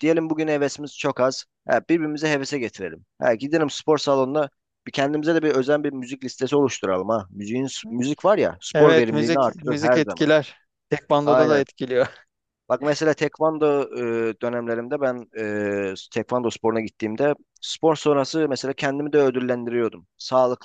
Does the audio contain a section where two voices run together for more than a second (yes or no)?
yes